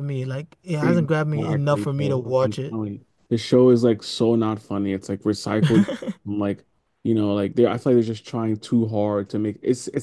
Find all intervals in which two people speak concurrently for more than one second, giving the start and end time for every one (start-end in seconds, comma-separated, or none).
0.8-2.8